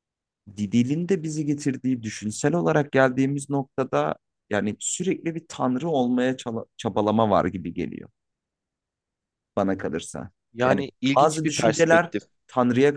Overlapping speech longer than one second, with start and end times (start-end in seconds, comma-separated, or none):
10.5-12.1